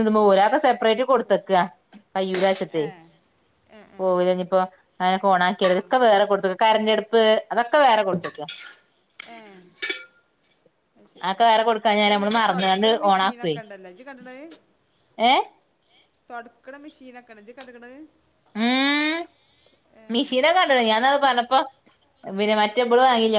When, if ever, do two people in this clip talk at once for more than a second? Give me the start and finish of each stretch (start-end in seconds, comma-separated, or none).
12.0-13.5